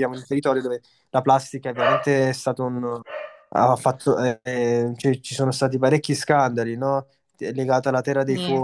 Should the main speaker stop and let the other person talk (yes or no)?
no